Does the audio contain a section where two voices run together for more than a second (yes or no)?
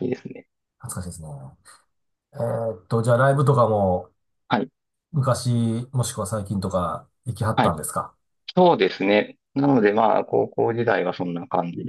no